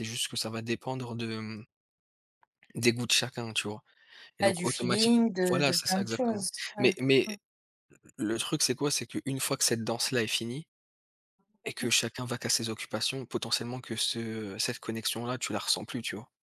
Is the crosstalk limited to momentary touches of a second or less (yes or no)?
no